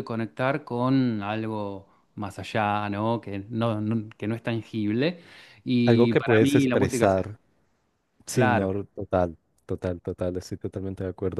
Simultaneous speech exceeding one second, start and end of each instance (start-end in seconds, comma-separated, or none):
5.8-7.4